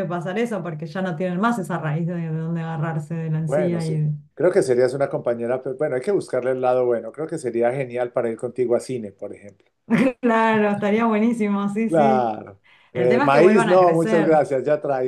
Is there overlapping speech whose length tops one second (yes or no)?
yes